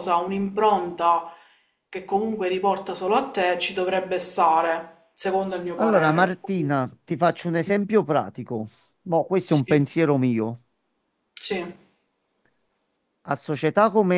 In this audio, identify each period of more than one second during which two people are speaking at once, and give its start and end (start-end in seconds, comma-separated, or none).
none